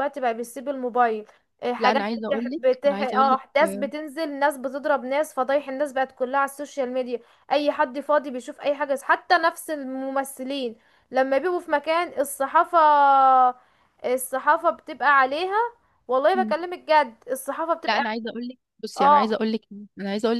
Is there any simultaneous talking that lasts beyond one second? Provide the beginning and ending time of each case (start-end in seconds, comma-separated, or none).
1.8-3.4